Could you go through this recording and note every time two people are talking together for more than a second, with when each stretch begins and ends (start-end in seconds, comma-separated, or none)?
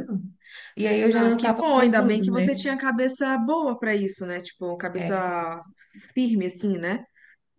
1.1-2.5